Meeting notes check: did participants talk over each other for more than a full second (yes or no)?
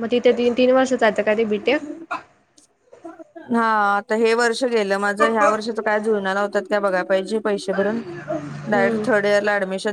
no